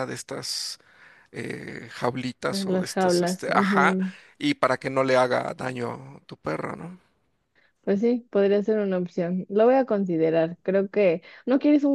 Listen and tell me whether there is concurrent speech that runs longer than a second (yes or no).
yes